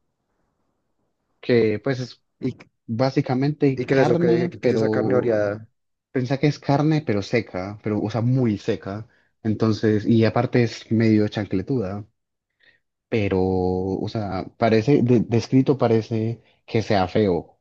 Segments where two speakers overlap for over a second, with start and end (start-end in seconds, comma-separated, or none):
3.7-5.4